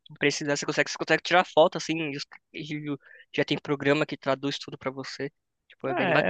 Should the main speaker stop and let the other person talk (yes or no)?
yes